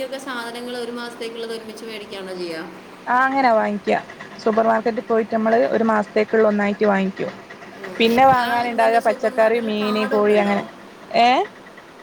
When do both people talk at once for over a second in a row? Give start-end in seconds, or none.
8.4-10.3